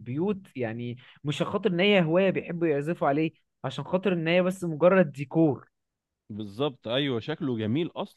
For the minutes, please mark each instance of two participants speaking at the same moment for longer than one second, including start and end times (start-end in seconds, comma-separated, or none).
none